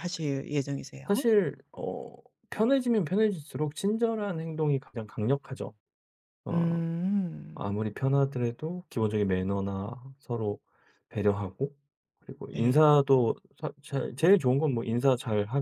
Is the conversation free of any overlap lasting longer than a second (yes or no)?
yes